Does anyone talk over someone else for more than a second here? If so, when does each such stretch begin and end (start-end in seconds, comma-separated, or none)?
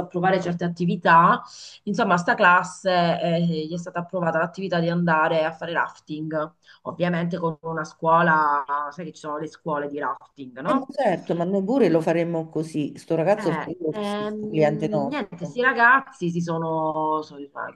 13.3-15.6